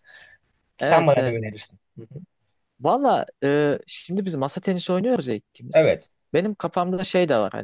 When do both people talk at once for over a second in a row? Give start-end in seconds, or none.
none